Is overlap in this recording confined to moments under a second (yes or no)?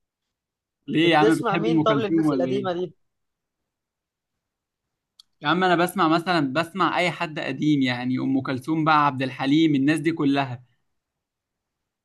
no